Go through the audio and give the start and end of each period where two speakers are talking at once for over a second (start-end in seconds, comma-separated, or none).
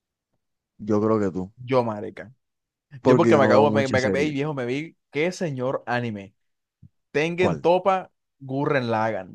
3.0-4.3